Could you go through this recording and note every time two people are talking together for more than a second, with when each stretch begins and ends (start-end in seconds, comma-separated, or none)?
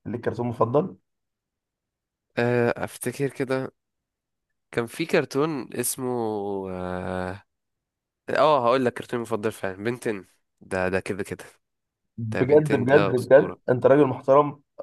12.3-13.6